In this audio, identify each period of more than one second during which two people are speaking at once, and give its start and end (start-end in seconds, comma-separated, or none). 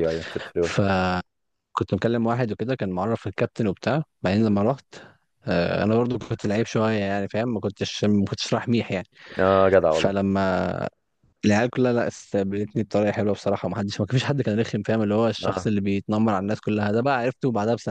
none